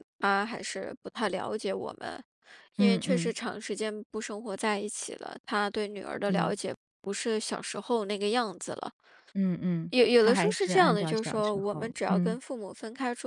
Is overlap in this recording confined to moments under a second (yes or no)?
no